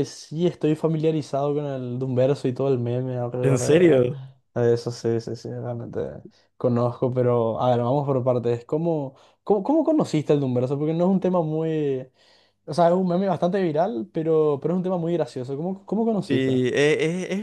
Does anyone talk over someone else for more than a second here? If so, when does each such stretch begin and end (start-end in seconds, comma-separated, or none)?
none